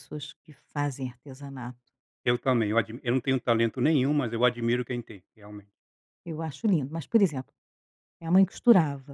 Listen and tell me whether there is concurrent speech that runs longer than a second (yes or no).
no